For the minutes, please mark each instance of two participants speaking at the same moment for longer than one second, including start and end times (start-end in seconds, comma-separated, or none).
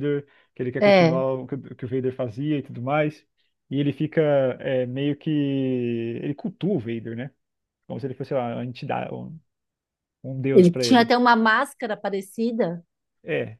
none